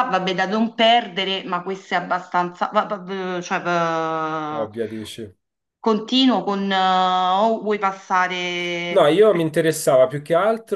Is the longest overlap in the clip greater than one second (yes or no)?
no